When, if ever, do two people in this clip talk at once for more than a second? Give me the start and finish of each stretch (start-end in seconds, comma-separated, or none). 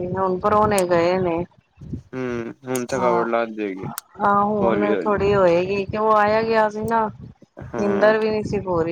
none